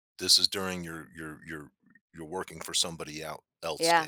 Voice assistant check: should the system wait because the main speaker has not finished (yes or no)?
no